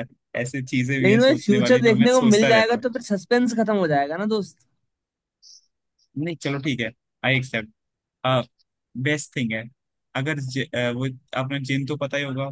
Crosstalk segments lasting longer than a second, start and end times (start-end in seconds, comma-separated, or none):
1.0-2.9